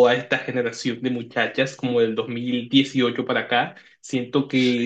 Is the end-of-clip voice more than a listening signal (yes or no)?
no